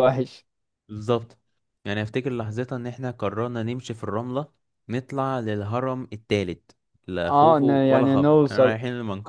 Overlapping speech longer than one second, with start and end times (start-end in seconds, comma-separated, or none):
7.3-8.8